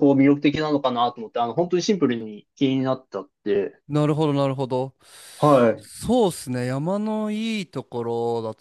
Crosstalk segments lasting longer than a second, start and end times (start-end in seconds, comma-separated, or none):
none